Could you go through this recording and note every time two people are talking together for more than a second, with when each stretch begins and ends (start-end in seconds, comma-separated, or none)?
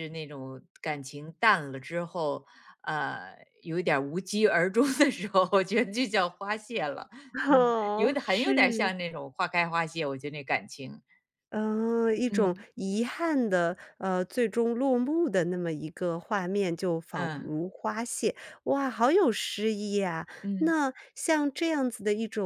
7.5-8.9